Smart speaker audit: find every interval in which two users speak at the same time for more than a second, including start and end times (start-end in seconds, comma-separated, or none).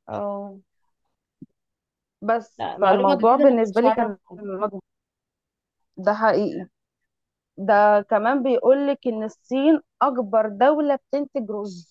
2.6-4.4